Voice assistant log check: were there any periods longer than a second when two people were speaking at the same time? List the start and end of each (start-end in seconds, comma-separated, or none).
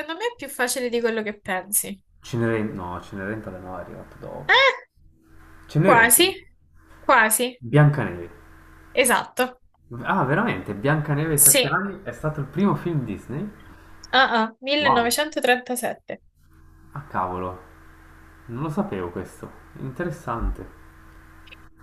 none